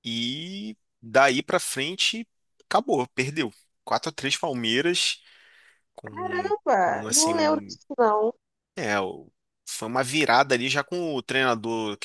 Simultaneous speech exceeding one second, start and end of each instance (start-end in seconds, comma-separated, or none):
6.0-7.8